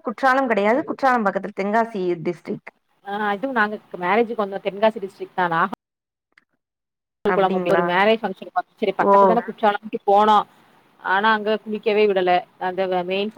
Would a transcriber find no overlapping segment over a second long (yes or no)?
yes